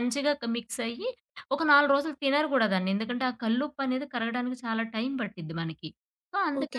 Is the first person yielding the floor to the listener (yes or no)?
yes